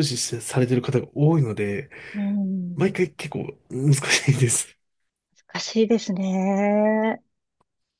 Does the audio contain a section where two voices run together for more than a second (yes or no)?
no